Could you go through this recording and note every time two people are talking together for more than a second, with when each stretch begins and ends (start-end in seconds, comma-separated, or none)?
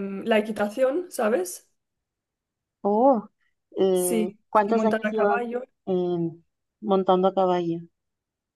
3.9-5.4